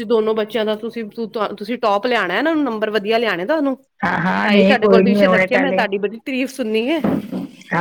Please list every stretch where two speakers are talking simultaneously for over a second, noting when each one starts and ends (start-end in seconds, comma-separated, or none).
4.4-5.8